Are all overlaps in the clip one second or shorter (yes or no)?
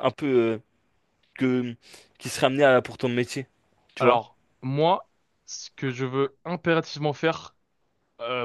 yes